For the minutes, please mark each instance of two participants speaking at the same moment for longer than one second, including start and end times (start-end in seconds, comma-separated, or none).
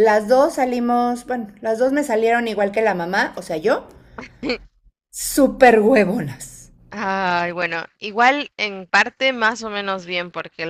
none